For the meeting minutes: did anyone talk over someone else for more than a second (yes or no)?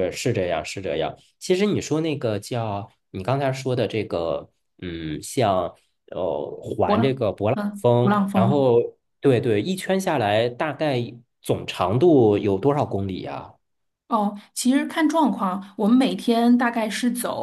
yes